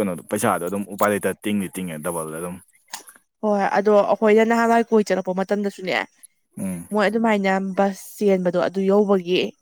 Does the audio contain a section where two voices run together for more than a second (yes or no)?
no